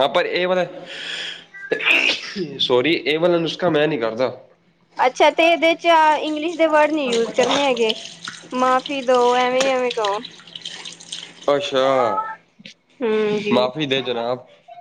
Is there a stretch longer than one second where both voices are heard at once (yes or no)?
no